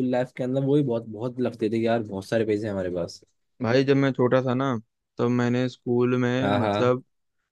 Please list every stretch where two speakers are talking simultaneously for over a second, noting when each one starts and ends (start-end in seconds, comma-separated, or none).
none